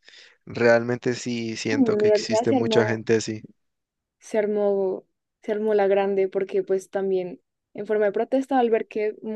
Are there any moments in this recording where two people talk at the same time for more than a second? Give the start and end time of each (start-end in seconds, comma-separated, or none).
1.7-3.0